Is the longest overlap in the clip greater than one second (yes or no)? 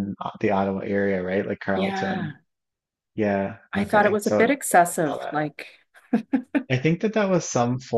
yes